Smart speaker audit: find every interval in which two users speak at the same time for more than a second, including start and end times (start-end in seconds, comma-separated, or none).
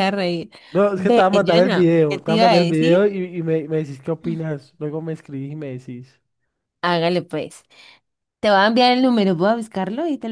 0.9-3.0